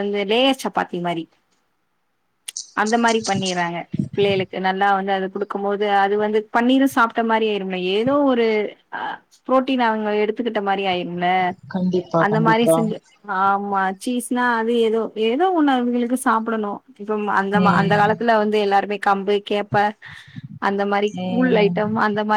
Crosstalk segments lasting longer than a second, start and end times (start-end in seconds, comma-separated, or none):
none